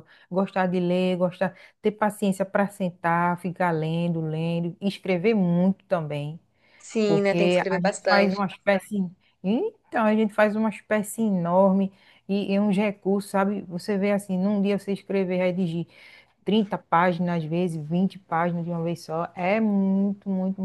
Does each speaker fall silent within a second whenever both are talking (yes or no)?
no